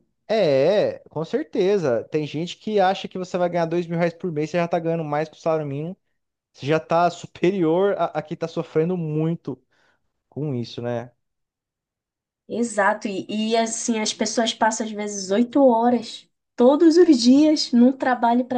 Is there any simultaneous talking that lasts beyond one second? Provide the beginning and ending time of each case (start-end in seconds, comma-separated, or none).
none